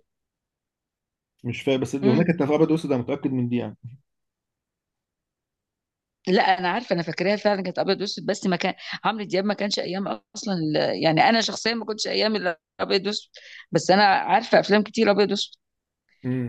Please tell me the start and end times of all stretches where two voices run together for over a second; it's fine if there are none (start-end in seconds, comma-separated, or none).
none